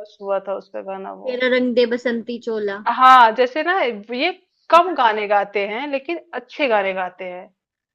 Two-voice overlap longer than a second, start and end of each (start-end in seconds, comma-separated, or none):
none